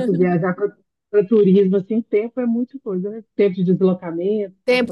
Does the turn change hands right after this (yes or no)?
yes